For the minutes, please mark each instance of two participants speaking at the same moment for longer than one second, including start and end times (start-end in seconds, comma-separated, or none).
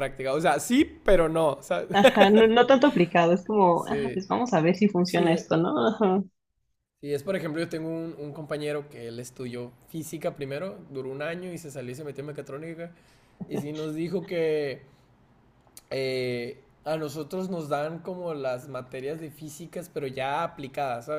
none